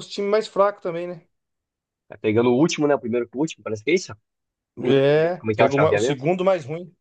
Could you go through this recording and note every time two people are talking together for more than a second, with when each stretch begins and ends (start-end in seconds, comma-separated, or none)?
4.9-6.2